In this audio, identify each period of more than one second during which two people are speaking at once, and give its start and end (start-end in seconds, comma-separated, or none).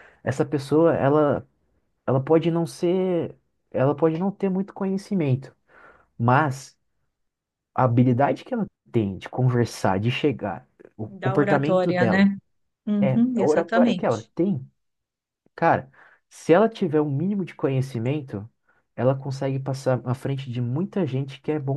11.1-12.3, 13.0-14.3